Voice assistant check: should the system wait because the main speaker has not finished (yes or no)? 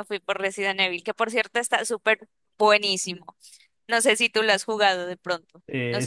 no